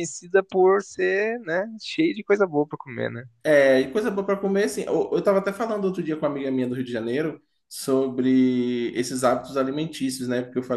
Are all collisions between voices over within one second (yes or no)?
yes